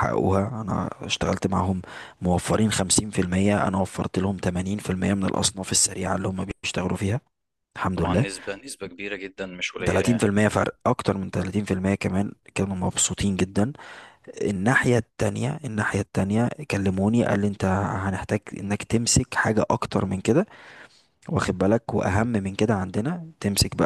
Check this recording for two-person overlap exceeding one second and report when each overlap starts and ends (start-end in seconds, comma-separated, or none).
none